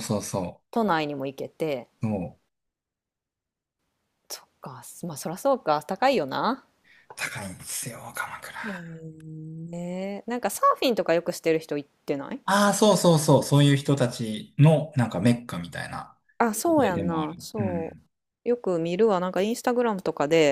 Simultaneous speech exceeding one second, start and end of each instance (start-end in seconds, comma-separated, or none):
16.7-18.0